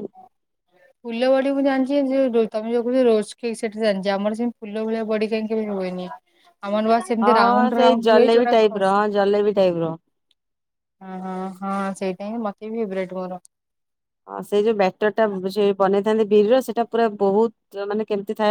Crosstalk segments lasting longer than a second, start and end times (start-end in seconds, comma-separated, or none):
7.2-9.1